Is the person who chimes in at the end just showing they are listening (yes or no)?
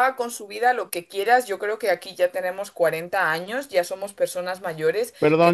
no